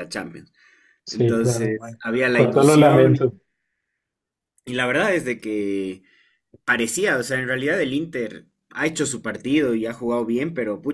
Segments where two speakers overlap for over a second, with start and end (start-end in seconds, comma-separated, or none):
1.1-3.3